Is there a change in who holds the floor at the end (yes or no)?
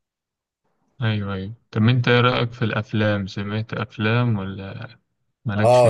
yes